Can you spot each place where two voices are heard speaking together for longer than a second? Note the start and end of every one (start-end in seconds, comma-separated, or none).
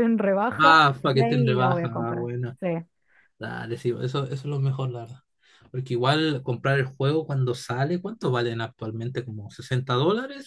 0.6-2.6